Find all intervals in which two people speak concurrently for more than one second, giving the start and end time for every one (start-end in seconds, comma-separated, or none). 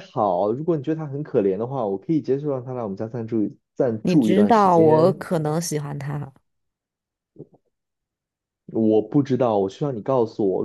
4.0-5.2